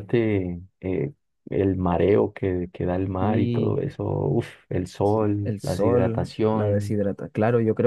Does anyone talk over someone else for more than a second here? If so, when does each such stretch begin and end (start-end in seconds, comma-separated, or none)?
5.0-7.0